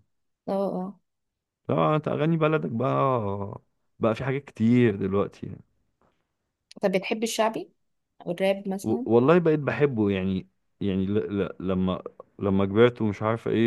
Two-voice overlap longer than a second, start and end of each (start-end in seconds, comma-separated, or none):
none